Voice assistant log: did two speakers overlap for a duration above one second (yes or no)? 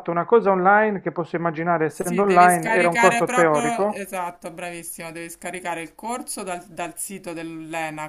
yes